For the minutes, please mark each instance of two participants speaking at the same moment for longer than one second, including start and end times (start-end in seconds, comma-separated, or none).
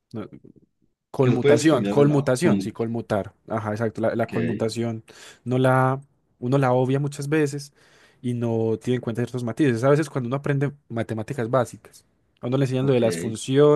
1.2-2.6